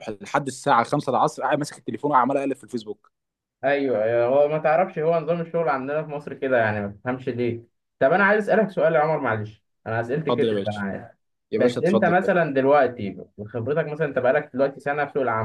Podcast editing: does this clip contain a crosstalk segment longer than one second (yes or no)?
no